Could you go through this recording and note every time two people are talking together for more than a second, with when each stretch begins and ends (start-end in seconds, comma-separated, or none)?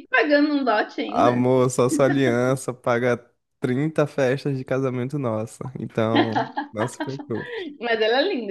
none